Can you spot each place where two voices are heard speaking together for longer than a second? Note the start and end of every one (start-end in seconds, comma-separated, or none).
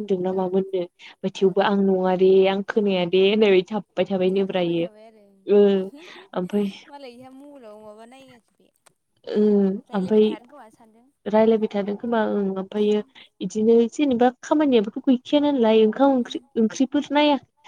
none